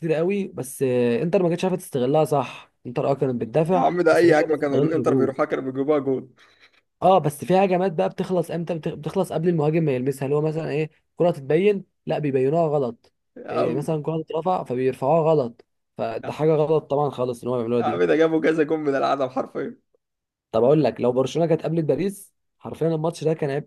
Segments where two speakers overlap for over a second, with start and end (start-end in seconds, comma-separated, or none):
3.7-5.3